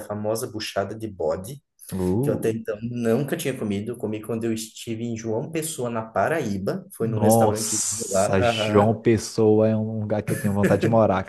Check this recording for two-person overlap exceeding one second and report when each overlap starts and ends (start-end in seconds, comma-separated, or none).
7.0-8.9